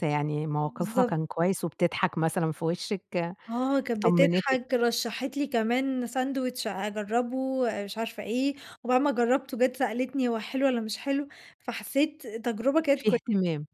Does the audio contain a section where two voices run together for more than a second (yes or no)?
no